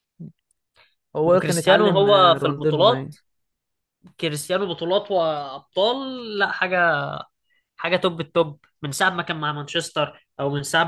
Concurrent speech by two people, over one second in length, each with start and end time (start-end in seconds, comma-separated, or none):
1.3-3.1